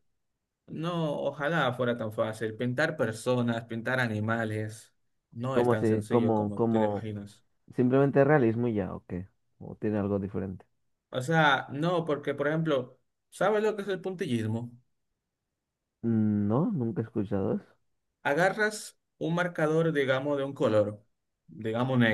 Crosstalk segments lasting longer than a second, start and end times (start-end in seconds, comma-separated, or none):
5.5-7.1